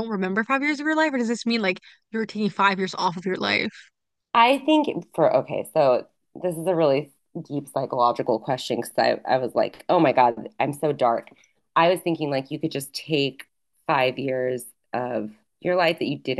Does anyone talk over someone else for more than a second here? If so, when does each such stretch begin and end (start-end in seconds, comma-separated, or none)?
none